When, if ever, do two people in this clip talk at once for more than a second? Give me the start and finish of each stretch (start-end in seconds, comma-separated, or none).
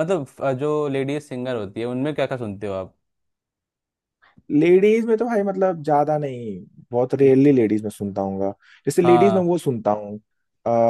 none